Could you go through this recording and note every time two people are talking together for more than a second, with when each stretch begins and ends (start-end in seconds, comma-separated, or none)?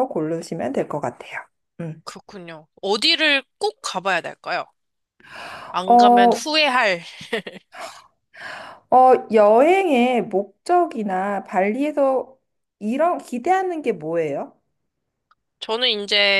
none